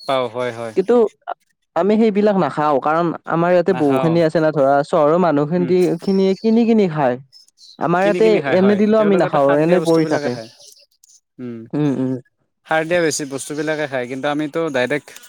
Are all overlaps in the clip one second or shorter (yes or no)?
no